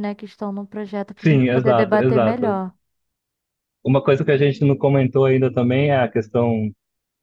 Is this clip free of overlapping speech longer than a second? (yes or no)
no